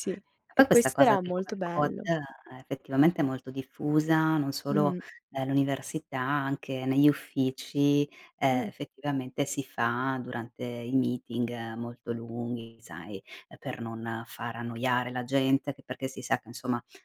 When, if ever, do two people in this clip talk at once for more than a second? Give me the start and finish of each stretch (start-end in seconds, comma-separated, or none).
0.5-2.1